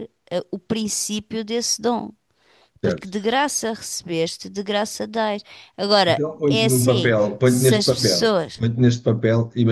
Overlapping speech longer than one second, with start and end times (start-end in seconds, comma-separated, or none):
6.1-8.6